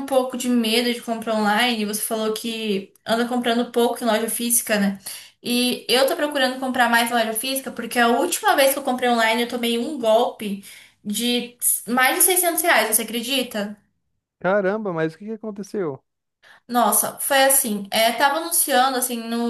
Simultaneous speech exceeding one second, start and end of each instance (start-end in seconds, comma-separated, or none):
none